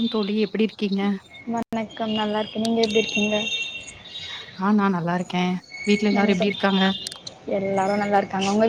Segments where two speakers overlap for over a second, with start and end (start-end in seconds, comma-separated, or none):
none